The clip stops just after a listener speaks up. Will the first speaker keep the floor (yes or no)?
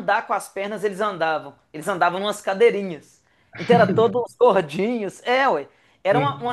yes